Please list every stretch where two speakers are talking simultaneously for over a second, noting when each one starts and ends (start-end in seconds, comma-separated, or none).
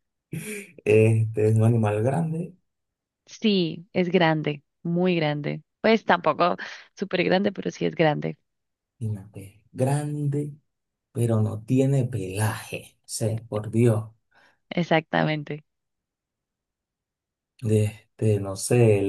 none